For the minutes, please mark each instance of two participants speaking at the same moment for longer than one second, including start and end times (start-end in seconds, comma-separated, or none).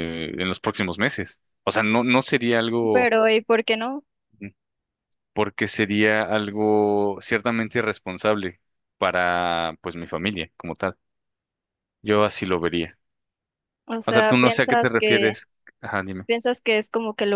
14.1-15.3